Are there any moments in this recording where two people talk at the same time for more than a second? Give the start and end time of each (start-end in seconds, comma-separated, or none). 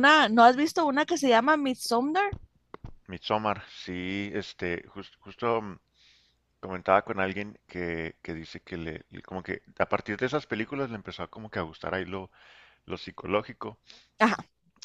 none